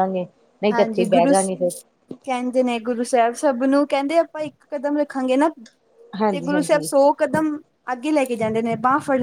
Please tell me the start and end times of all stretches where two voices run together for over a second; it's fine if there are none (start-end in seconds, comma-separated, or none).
none